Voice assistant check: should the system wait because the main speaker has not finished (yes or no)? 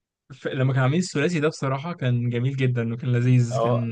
no